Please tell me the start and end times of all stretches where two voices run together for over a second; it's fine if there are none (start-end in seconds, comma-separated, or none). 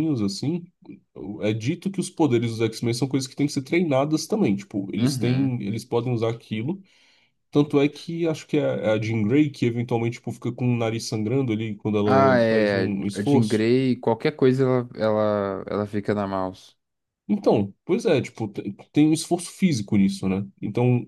12.0-13.7